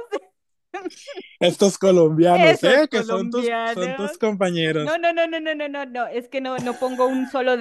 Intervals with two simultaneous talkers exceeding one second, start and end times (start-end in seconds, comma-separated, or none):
2.3-4.2